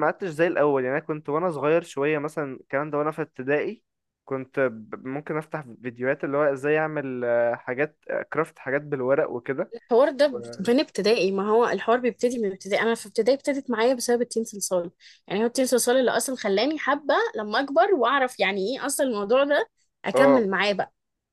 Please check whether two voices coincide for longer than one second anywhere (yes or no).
no